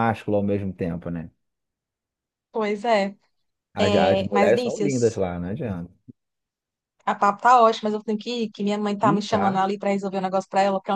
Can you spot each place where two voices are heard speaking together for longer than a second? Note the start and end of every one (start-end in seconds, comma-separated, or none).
3.8-5.2